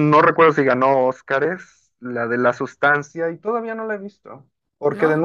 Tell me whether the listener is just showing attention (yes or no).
yes